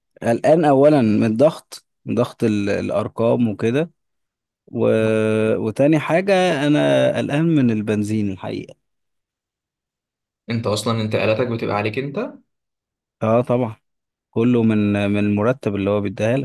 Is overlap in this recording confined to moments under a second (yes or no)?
yes